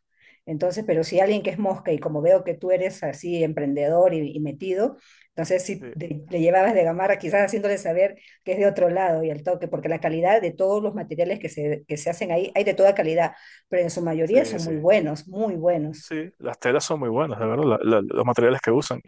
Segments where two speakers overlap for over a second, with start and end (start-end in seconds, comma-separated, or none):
none